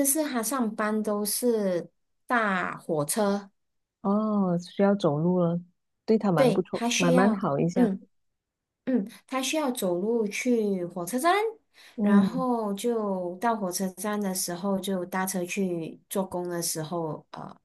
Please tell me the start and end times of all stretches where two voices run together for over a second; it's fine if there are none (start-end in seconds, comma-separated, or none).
6.3-7.9